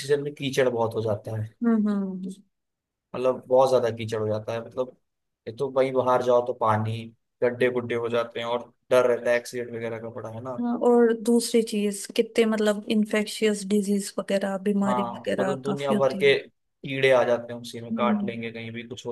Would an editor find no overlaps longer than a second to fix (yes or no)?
no